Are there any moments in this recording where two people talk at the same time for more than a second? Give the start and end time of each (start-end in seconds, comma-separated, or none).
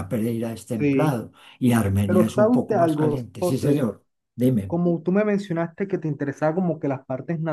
2.0-3.9